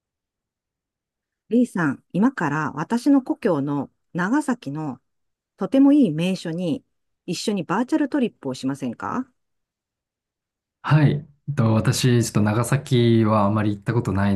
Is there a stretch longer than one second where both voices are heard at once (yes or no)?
no